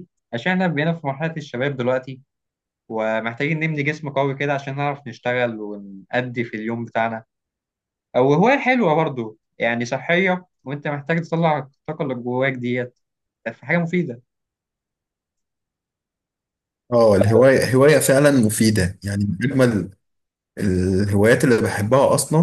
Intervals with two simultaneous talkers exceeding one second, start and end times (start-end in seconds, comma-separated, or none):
none